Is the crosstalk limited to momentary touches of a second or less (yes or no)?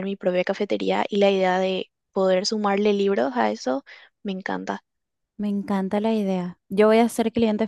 yes